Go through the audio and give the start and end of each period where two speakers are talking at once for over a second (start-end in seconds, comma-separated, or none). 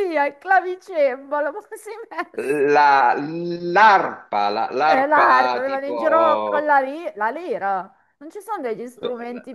4.8-6.8